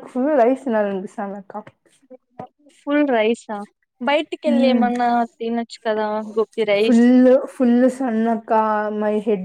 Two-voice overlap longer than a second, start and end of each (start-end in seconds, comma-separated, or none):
none